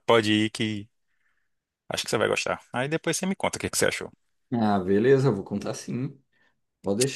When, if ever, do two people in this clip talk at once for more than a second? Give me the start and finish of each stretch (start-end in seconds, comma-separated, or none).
none